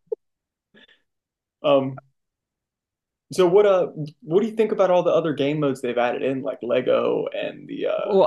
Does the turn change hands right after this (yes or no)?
yes